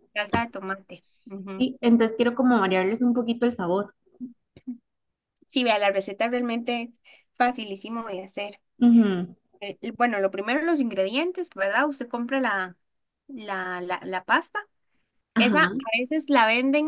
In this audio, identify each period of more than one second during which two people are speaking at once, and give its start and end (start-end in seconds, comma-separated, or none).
none